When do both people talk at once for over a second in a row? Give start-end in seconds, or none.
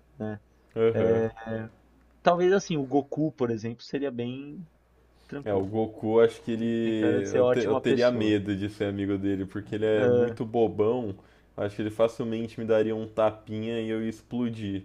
6.6-8.4